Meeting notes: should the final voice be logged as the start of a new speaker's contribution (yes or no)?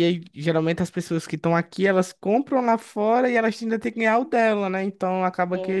no